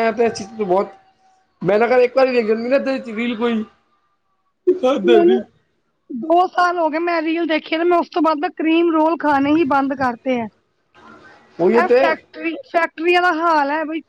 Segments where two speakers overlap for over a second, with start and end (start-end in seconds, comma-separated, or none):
none